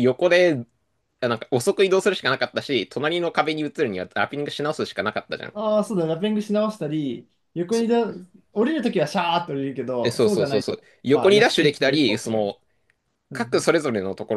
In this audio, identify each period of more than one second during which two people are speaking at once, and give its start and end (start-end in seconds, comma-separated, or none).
10.0-12.6